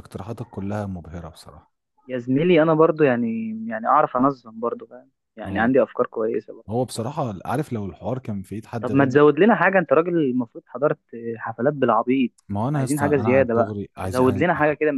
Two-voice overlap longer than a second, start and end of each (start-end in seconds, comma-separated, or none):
12.8-14.4